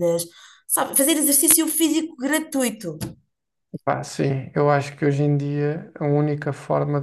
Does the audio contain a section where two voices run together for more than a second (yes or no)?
no